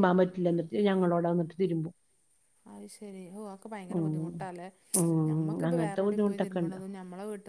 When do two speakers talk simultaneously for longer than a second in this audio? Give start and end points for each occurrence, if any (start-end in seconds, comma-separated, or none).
5.3-6.8